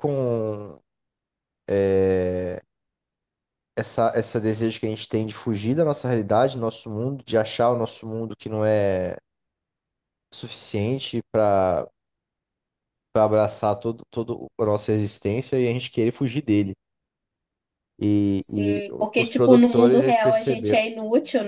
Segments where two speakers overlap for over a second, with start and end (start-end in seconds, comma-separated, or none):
18.4-20.8